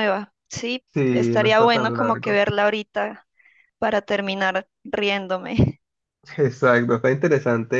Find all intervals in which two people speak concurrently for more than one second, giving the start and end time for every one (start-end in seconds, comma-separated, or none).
0.9-2.4